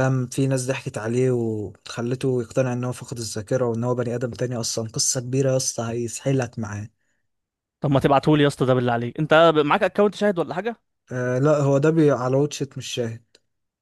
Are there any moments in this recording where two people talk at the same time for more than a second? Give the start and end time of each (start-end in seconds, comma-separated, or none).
none